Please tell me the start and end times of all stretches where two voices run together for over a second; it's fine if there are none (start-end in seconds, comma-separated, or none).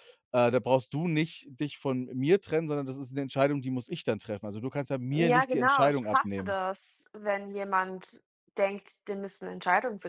5.2-6.6